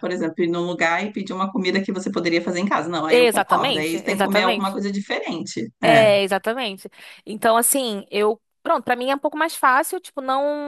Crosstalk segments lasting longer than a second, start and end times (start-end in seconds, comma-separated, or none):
3.1-4.8